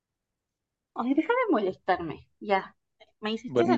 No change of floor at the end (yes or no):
no